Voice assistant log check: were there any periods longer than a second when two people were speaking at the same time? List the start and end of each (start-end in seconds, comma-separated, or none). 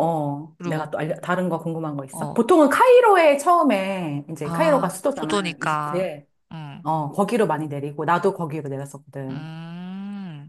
4.4-6.1